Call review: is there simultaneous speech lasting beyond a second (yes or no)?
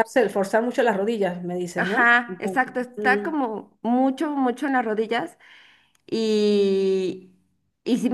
yes